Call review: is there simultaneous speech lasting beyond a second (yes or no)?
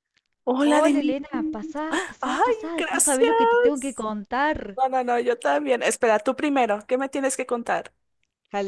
yes